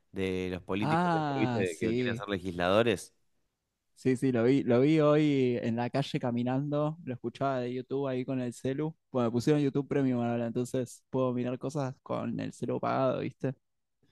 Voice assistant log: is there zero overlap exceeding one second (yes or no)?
no